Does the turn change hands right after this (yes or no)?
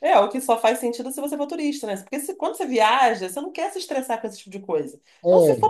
no